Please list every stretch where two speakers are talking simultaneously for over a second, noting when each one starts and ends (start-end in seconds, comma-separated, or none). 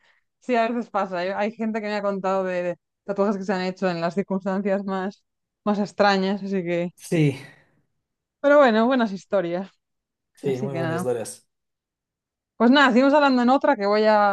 none